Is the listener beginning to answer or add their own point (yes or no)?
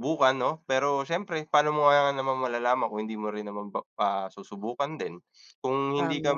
no